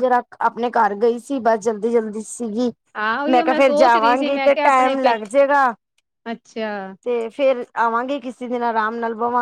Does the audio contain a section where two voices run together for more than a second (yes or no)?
yes